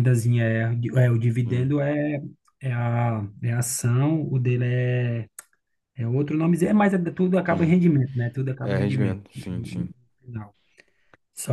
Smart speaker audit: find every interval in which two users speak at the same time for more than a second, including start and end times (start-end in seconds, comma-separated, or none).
8.6-9.9